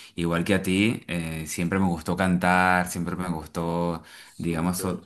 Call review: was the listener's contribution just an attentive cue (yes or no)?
yes